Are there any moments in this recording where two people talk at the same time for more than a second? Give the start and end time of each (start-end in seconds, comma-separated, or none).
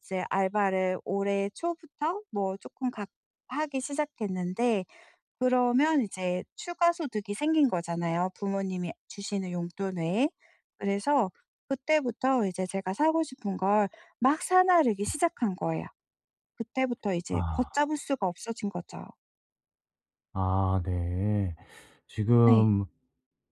none